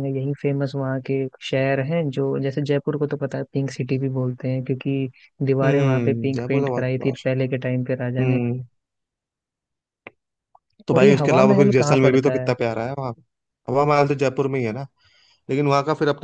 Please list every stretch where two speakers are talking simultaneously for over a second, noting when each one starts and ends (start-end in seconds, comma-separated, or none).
5.6-7.5, 10.9-12.5